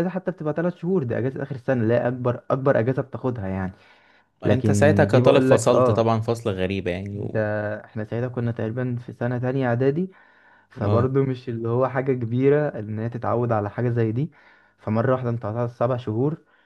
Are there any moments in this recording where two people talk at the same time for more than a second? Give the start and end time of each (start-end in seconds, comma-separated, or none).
4.4-6.1